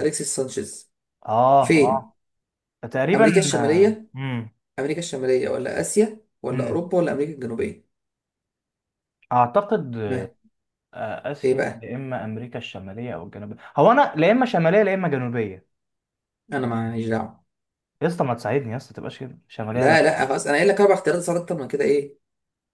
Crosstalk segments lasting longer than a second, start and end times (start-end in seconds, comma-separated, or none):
none